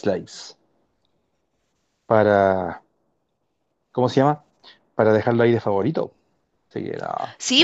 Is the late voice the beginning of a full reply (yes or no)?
yes